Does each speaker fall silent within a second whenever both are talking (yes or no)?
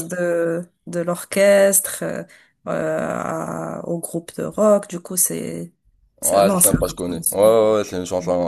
no